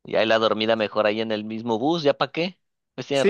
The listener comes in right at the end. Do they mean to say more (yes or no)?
yes